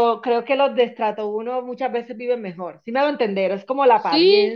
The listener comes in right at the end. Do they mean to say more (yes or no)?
no